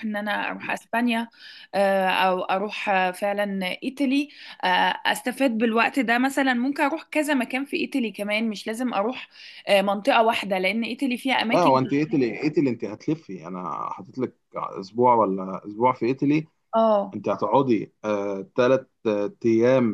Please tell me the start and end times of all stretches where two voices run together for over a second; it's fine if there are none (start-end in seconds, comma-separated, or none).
none